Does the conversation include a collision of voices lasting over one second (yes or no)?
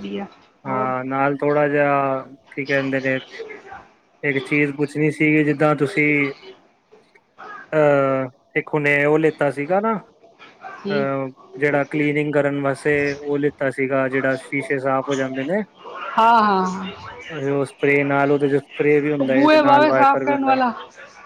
yes